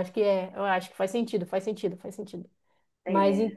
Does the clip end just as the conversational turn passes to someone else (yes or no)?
no